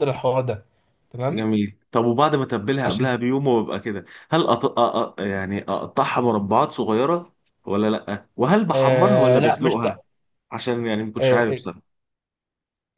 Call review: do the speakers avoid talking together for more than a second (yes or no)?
no